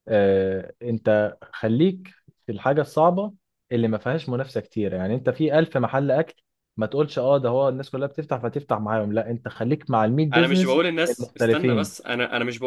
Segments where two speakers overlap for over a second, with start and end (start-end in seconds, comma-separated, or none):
10.3-11.9